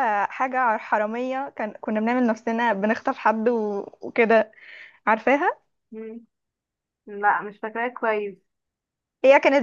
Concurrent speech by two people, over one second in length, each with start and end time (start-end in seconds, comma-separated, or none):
none